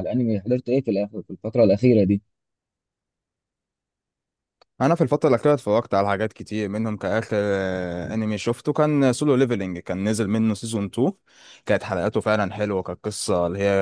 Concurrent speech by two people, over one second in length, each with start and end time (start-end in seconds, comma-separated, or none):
none